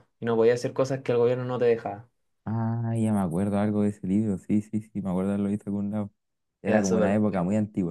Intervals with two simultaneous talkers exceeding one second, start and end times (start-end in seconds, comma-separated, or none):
none